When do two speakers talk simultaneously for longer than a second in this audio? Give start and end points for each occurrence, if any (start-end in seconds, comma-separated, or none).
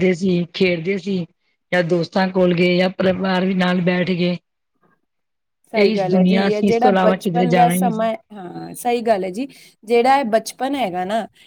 5.8-8.1